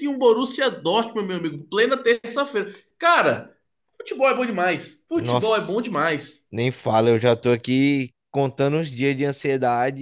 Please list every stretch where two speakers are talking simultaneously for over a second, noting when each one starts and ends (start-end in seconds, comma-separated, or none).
none